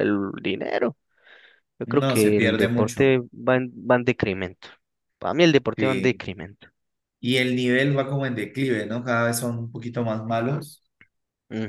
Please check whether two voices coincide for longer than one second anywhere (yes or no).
yes